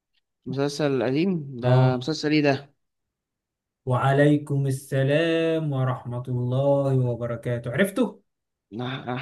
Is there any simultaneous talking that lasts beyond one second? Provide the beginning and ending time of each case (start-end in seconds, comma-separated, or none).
none